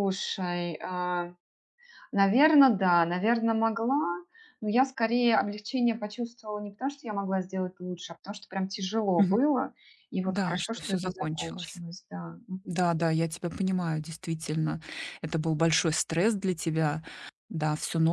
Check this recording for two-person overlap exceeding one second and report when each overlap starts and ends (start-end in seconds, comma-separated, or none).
10.2-11.8